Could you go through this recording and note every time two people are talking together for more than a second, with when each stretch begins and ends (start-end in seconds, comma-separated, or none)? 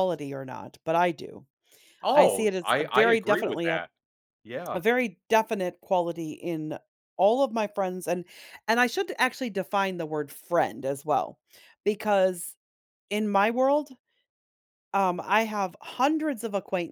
2.1-3.8